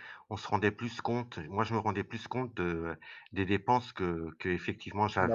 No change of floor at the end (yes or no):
yes